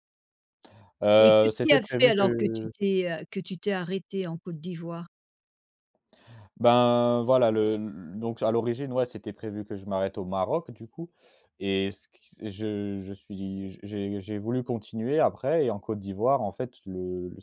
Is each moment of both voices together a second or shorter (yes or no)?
no